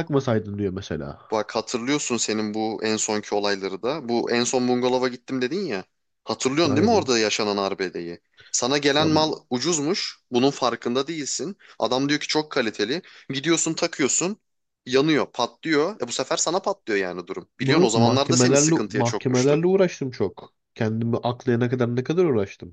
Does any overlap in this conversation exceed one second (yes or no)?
yes